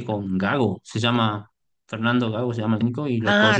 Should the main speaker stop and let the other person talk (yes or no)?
yes